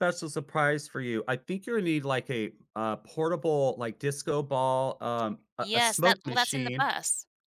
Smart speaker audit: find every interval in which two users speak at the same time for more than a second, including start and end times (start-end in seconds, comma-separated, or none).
5.6-6.9